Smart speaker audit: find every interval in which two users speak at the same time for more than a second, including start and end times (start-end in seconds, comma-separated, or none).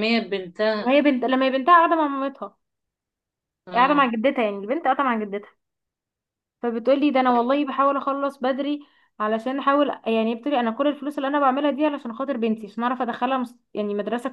none